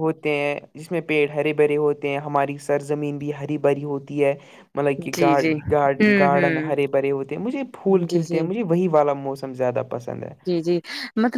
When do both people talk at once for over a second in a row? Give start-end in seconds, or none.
none